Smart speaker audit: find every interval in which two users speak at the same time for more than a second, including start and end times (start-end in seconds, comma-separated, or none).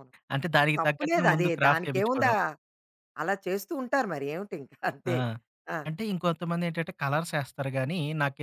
0.8-2.3